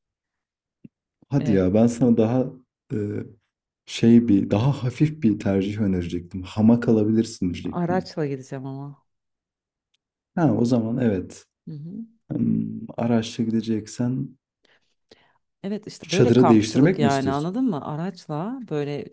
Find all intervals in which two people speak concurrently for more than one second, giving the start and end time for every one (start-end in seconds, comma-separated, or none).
16.0-17.5